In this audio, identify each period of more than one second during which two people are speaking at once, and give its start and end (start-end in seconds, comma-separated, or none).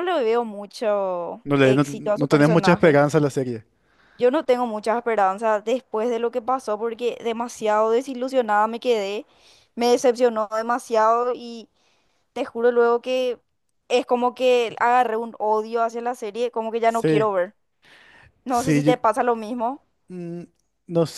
1.4-3.0